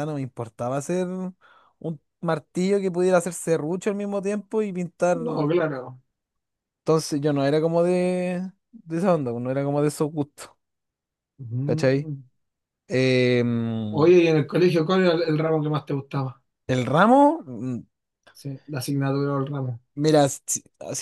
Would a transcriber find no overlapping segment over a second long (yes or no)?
yes